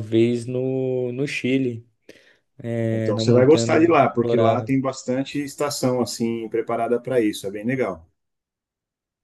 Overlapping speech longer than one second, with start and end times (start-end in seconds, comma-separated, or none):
2.9-4.8